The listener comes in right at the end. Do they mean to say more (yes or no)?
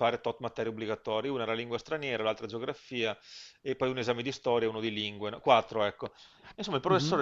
no